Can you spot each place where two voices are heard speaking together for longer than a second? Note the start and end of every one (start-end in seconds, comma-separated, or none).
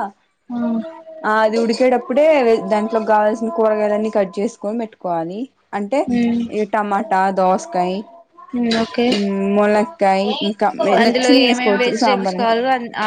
11.1-12.6